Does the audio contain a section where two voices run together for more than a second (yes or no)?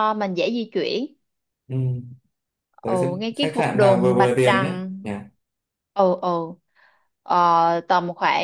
yes